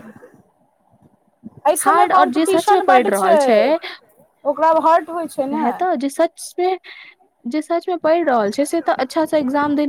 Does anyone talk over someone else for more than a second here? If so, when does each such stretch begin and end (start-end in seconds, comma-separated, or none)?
1.8-3.6